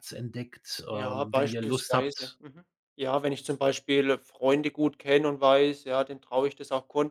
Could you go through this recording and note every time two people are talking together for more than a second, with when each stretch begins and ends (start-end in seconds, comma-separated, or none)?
0.9-2.4